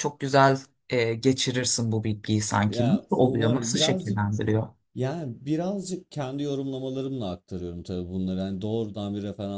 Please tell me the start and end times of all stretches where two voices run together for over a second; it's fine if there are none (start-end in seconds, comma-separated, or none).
2.7-4.2